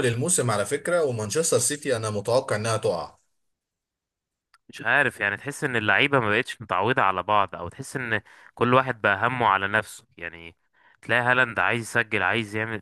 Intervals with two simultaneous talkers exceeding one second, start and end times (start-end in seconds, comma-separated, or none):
none